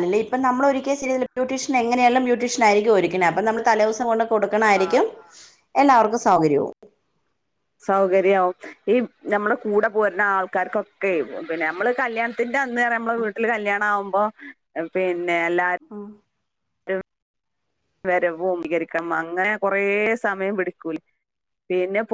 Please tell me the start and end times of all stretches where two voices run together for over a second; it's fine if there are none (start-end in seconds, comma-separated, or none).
none